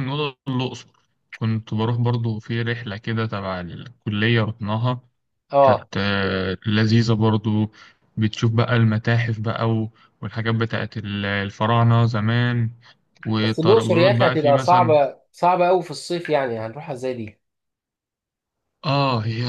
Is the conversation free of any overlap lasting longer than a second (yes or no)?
no